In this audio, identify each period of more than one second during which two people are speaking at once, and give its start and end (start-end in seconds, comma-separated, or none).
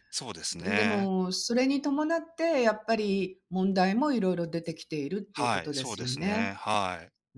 5.3-6.5